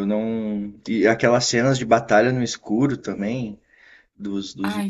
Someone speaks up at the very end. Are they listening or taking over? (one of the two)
listening